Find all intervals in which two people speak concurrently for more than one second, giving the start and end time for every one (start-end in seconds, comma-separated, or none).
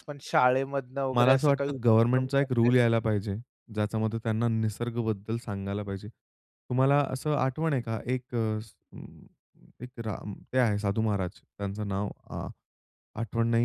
1.1-2.7